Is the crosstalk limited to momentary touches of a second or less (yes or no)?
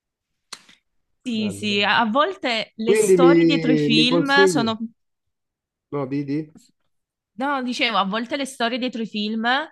no